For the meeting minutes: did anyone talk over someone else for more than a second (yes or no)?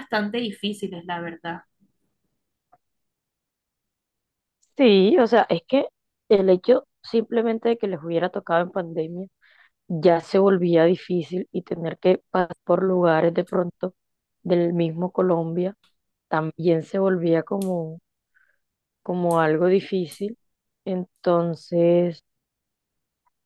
no